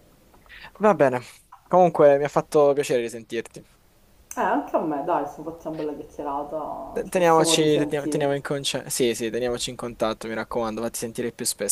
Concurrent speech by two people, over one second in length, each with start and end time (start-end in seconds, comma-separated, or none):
6.9-8.4